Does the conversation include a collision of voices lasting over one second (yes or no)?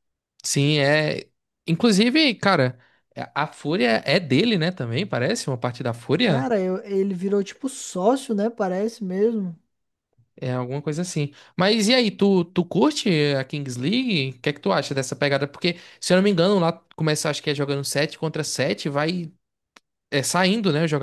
no